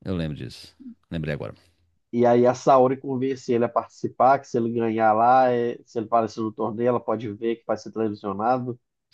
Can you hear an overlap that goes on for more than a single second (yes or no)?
no